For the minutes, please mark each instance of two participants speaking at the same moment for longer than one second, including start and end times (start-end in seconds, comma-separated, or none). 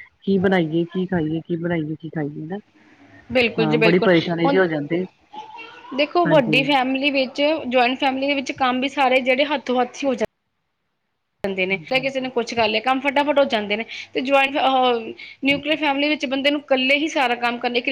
none